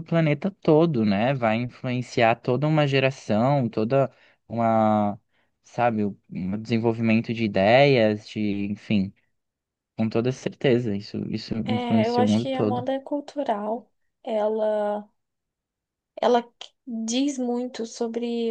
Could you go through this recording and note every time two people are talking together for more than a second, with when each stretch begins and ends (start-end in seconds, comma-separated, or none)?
11.6-12.9